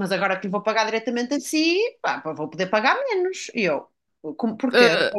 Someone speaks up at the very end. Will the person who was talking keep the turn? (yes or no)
yes